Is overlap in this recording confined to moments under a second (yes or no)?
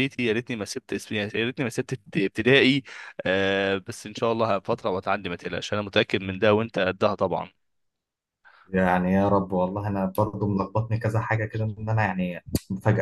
yes